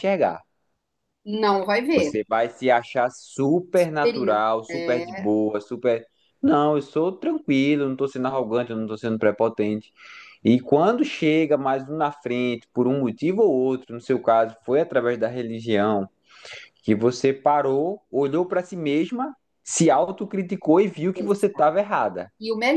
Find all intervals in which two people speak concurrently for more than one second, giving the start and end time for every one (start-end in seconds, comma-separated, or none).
3.7-5.2